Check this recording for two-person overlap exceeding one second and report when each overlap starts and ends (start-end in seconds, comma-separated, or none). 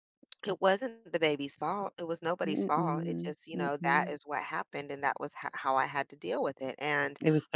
2.4-4.1